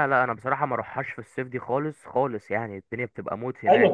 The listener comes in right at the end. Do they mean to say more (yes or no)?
yes